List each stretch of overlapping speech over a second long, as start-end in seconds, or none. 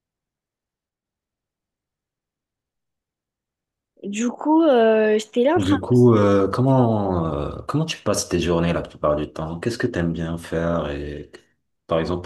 none